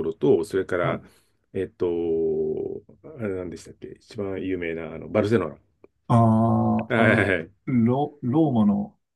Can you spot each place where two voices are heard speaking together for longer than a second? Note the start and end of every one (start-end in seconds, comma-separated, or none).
none